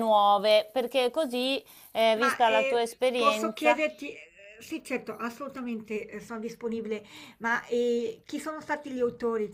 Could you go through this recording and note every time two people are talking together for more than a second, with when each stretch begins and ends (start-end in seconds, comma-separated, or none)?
2.1-3.8